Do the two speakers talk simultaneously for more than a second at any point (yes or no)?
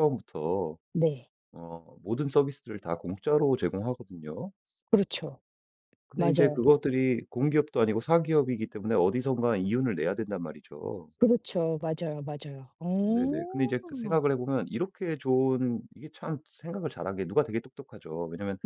yes